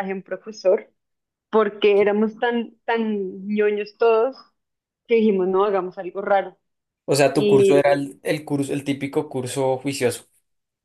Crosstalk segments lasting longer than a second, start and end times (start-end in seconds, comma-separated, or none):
none